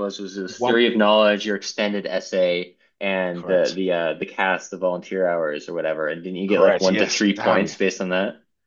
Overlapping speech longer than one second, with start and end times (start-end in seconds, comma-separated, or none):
6.5-7.7